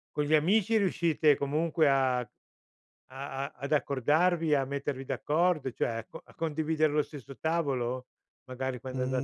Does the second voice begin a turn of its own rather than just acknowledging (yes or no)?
yes